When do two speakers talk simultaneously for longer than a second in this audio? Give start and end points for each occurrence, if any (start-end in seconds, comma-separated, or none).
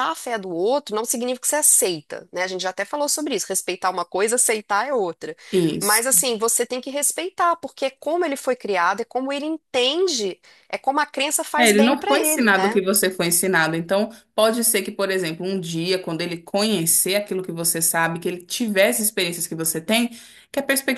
11.6-12.8